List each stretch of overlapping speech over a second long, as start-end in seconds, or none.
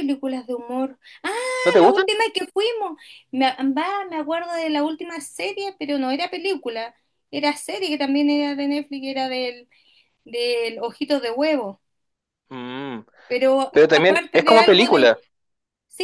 13.7-15.1